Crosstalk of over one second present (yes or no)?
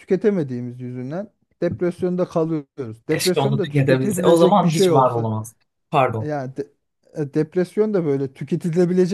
yes